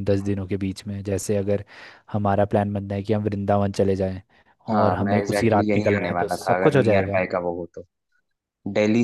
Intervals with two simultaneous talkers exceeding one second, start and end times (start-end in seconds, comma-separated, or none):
4.8-7.2